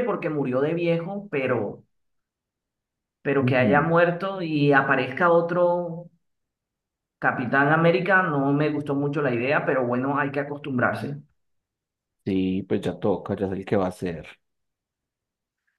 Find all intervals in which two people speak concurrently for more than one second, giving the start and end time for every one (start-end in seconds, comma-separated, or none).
none